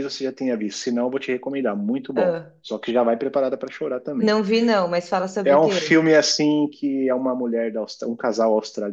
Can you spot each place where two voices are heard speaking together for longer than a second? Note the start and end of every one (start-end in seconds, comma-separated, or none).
none